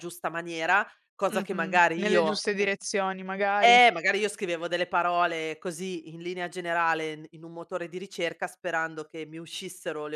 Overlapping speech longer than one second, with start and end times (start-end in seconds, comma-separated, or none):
1.3-2.7